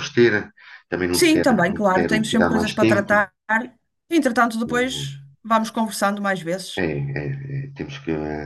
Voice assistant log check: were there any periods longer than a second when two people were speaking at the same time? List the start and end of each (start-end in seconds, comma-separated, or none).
1.1-3.3